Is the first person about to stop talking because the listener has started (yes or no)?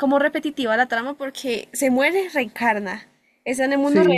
yes